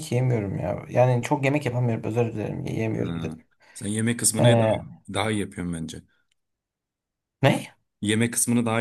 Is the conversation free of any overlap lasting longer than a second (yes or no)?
yes